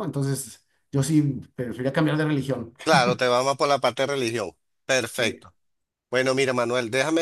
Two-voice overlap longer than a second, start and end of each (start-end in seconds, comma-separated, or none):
none